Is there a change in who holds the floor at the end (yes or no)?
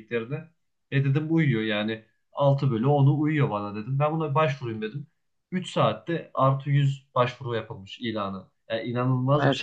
no